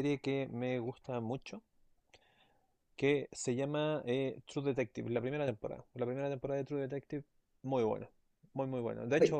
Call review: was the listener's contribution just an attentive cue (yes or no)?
yes